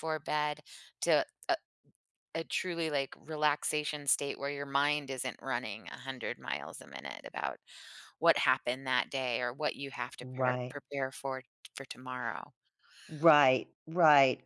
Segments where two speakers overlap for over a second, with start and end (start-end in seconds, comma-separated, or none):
none